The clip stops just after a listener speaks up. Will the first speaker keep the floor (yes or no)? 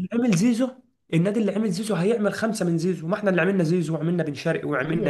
no